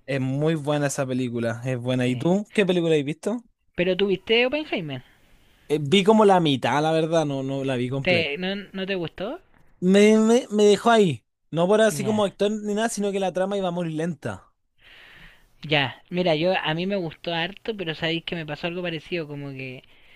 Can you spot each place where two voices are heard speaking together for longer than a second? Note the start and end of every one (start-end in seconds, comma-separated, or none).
none